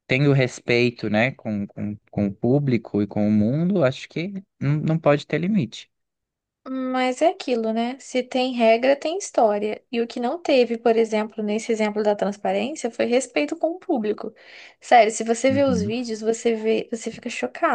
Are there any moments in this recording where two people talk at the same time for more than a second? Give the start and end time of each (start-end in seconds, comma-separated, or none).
none